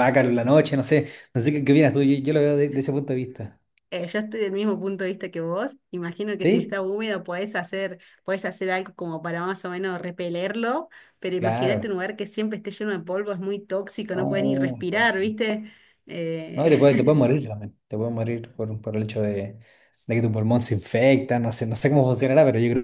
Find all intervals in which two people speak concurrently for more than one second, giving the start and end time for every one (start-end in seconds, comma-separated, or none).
14.1-15.3